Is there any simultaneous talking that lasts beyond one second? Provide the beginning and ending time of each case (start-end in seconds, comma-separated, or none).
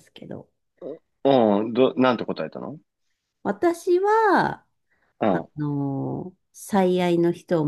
none